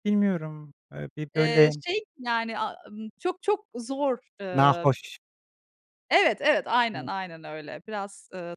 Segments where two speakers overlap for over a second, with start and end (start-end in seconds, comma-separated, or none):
none